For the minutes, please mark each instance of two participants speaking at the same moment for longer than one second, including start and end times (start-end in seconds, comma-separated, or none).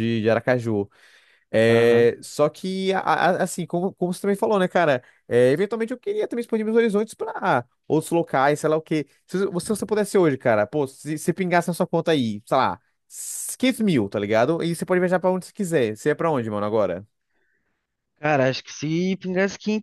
none